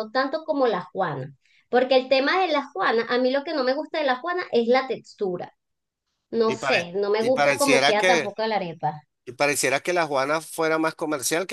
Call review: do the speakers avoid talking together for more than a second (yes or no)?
no